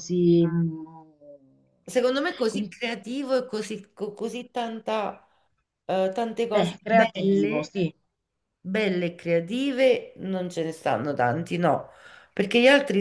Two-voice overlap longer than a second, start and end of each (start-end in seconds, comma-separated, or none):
6.5-7.7